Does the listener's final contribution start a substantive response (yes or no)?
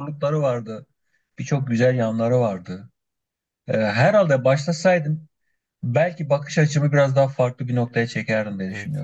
yes